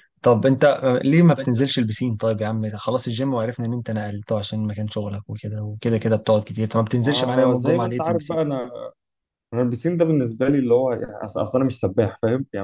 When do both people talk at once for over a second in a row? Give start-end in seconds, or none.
7.0-8.4